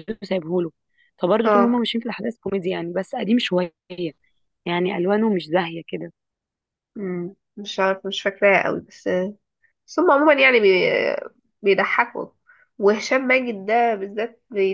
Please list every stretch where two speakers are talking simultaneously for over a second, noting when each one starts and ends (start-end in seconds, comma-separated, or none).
none